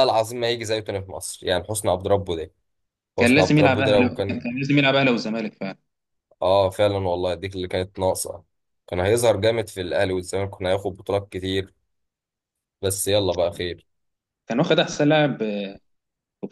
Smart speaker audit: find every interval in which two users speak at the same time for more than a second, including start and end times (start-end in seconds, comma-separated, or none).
3.2-4.4